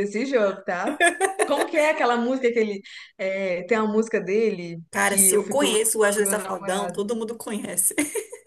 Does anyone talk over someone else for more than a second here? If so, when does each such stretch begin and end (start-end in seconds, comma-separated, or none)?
4.9-7.0